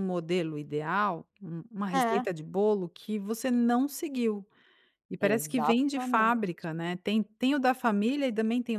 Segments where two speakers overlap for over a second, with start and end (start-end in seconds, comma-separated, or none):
5.2-6.5